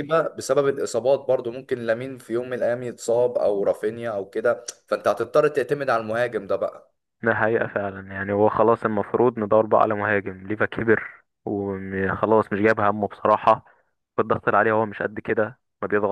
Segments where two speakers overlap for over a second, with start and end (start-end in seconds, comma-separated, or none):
none